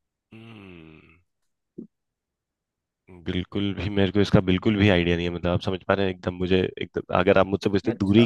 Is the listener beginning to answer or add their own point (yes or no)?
no